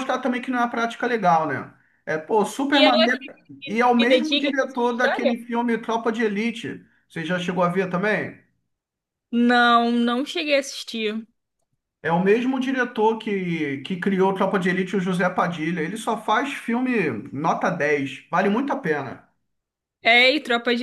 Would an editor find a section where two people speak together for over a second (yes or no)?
yes